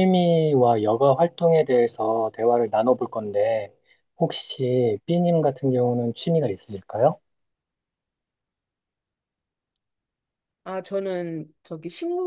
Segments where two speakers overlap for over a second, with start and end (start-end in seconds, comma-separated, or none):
none